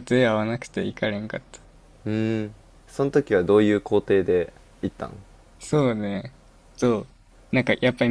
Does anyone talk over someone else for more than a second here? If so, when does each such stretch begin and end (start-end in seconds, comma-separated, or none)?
none